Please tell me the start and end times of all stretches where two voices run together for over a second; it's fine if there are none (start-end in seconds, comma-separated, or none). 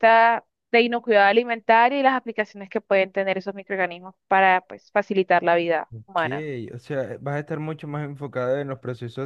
none